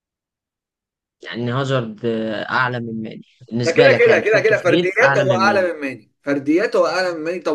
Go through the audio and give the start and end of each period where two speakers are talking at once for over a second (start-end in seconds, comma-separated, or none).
3.6-5.7